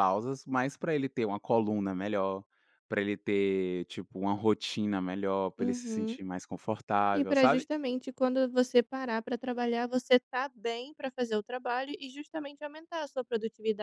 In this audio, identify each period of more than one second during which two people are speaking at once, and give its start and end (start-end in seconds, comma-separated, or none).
none